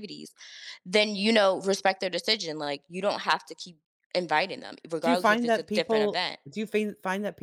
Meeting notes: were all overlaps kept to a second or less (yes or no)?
no